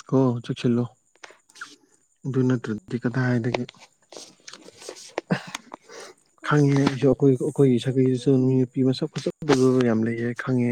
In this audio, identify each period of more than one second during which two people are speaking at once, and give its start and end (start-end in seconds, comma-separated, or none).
6.5-8.4